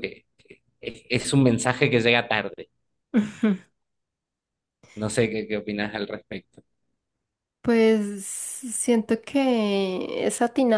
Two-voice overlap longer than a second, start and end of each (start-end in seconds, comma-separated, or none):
none